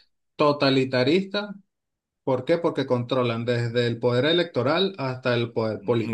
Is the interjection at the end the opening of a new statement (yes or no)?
yes